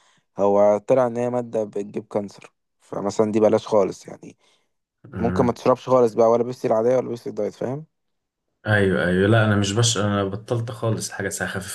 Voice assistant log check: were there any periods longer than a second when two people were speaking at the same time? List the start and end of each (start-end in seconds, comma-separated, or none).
none